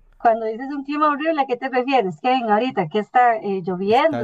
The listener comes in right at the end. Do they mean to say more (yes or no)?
yes